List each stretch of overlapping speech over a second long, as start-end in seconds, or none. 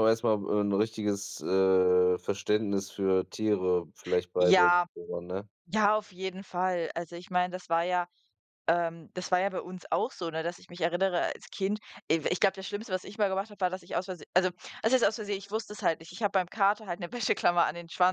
none